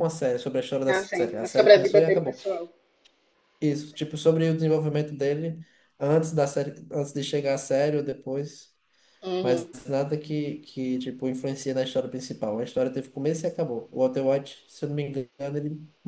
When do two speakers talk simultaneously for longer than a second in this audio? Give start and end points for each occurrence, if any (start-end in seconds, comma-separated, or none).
0.9-2.4